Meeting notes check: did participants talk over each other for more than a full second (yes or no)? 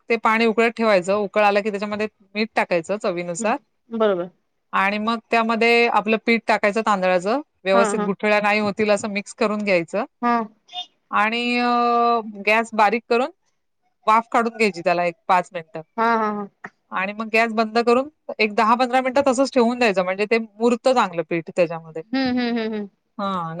no